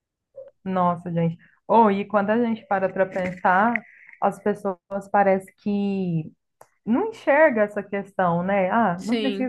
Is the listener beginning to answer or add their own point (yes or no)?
no